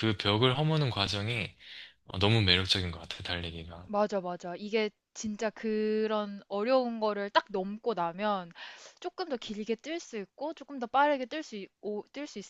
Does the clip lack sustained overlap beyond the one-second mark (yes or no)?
yes